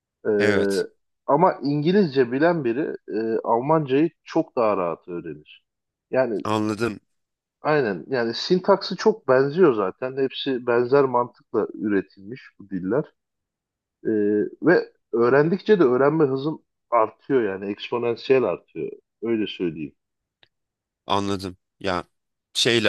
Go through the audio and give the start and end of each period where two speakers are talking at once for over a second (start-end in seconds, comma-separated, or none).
none